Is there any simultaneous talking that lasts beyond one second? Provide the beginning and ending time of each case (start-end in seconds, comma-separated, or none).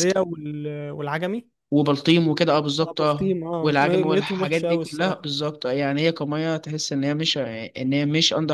2.8-5.3